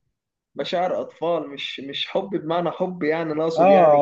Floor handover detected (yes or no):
yes